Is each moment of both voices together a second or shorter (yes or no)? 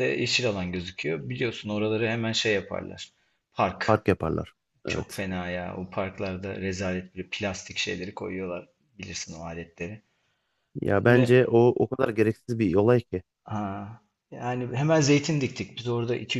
yes